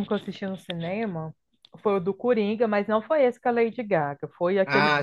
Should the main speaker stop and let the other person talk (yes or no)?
yes